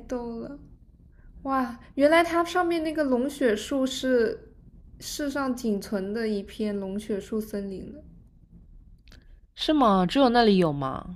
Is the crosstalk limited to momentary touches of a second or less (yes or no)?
yes